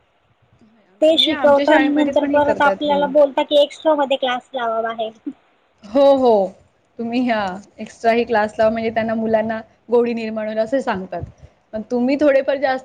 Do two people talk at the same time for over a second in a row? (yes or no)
yes